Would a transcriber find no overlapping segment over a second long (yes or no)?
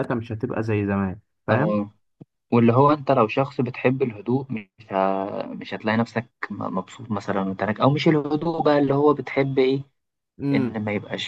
yes